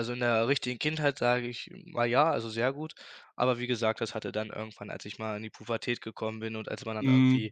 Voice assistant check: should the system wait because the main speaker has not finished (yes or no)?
yes